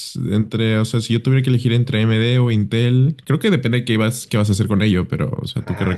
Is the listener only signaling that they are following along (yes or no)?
no